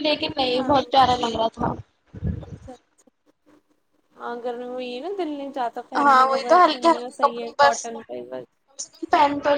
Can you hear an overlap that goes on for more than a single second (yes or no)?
yes